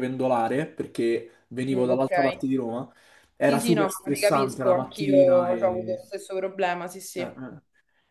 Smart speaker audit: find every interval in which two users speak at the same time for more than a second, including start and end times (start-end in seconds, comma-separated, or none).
3.4-6.0